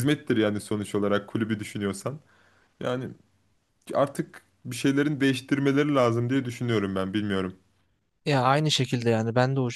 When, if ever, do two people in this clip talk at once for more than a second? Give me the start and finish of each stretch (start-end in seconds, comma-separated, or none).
none